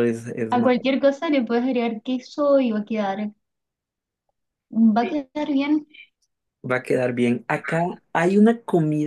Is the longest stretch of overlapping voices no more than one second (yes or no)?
yes